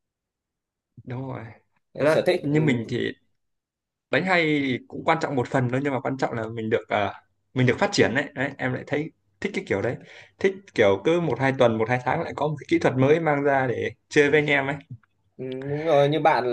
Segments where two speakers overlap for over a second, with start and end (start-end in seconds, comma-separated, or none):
none